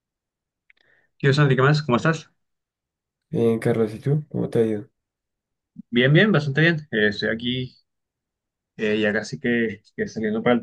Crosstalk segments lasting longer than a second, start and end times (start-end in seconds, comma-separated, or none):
none